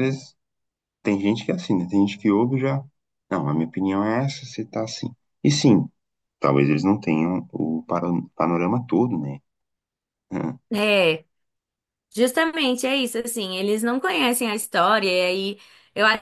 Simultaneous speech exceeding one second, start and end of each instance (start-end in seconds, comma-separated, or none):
none